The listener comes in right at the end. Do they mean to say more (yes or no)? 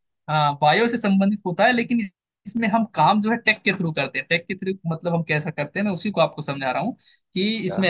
no